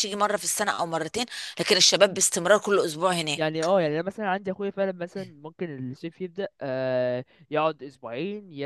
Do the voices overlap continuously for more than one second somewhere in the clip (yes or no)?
no